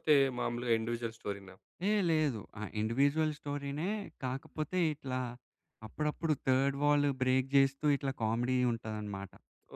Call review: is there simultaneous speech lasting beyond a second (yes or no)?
no